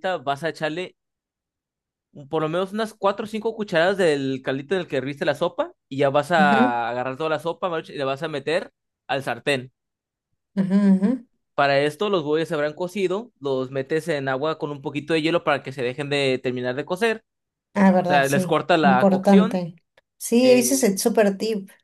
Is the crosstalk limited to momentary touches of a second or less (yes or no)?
no